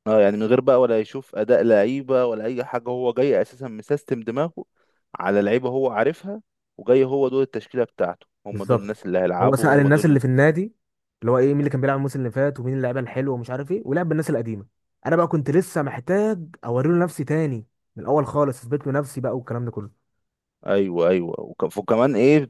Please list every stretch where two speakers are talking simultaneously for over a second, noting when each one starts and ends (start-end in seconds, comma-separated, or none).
8.5-10.2